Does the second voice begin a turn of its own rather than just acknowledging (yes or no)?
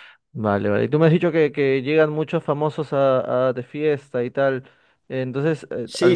yes